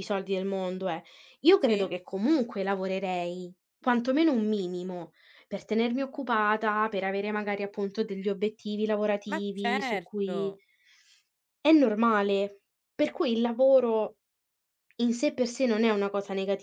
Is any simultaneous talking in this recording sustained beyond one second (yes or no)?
yes